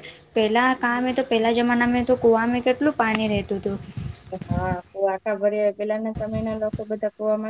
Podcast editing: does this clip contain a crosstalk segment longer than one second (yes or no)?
no